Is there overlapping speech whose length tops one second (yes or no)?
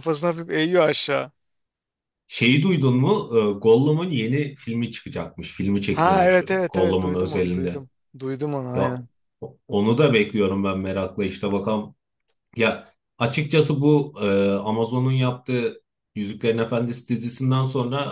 yes